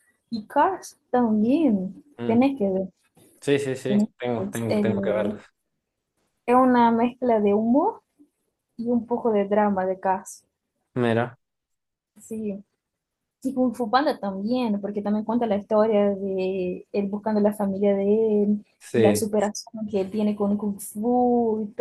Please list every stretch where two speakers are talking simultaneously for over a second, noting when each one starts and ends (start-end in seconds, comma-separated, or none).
3.9-5.4